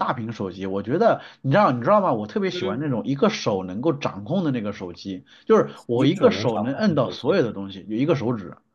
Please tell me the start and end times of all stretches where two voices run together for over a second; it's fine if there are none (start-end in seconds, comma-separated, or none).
5.9-7.4